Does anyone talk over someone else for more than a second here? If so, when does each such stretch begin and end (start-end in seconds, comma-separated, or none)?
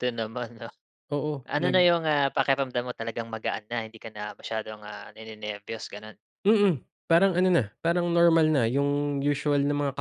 none